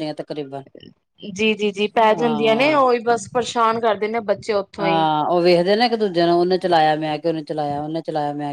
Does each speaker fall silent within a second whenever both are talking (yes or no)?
yes